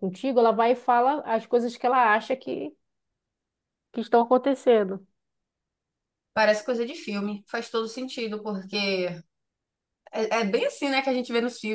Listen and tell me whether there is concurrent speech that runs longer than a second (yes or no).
no